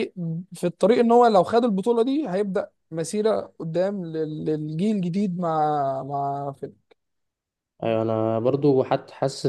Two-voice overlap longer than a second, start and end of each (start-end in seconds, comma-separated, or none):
none